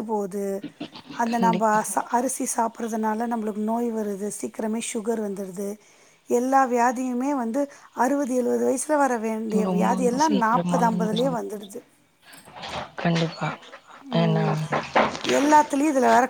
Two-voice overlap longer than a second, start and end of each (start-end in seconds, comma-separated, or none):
9.7-11.4